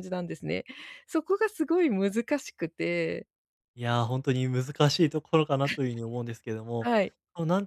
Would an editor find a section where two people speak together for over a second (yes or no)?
no